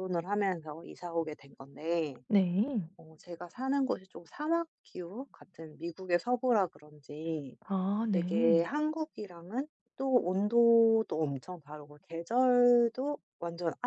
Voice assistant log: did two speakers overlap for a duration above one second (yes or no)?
no